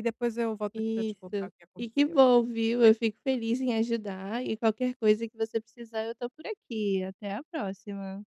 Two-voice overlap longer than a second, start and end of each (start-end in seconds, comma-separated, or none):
0.7-2.3